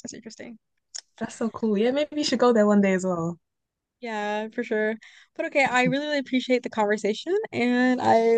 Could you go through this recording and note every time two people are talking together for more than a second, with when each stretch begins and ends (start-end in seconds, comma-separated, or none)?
none